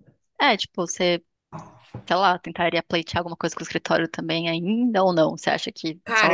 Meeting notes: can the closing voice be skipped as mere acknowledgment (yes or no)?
no